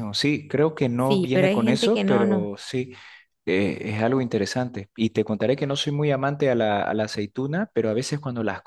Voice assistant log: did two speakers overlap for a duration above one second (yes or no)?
yes